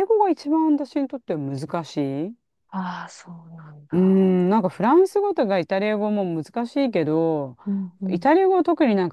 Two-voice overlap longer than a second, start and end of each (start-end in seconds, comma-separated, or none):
none